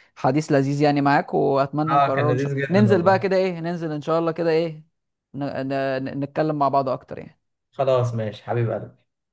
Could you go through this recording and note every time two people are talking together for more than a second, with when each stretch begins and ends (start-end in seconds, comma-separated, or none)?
1.9-3.3